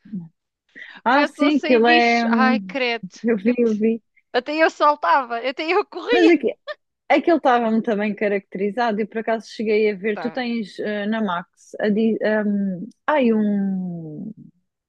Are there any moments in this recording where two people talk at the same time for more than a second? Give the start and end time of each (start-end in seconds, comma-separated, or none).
1.1-2.8